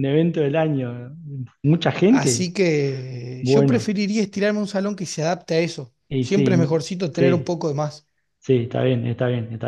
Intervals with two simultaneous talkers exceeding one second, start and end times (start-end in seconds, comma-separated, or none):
6.1-7.6